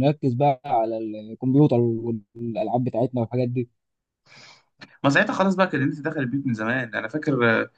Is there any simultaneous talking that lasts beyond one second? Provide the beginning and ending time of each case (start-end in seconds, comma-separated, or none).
none